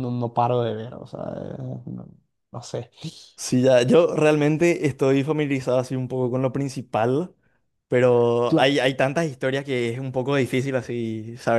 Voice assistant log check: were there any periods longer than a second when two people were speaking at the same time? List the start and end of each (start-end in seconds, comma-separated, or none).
none